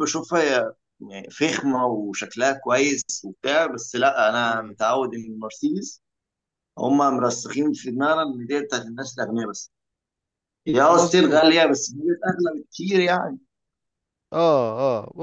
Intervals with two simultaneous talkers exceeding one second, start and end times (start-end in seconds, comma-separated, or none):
none